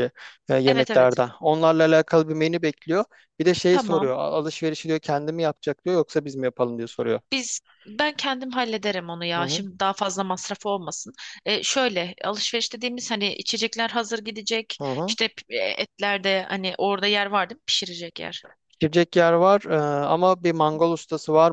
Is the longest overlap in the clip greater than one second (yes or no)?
no